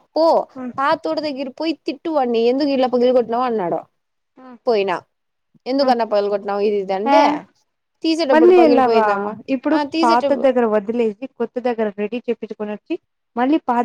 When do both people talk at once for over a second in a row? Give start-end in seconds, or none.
none